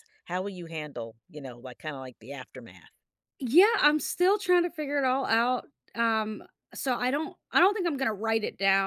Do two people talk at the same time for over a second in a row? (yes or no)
no